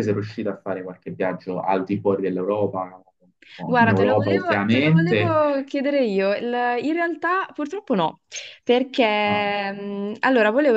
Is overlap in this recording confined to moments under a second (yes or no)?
no